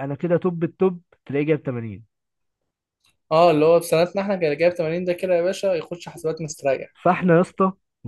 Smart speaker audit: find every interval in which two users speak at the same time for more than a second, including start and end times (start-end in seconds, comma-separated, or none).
none